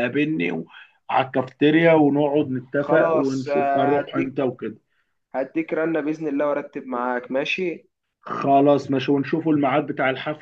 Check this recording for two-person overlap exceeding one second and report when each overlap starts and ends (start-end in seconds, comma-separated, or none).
2.8-4.3